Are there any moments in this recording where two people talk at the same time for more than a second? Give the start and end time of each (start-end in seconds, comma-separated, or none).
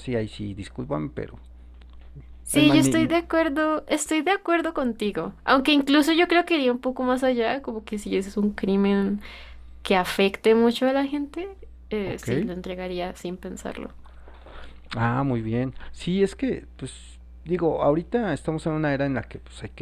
none